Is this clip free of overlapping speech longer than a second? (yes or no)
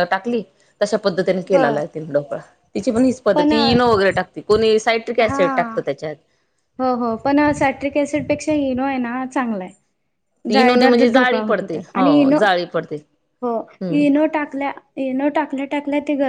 no